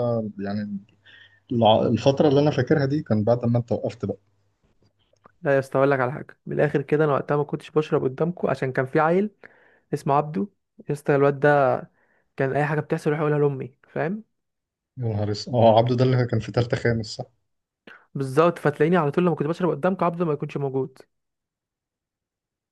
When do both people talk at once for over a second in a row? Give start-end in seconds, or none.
none